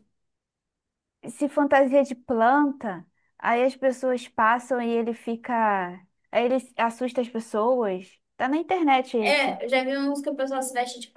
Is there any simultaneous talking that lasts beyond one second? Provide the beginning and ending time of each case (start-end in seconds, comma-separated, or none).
none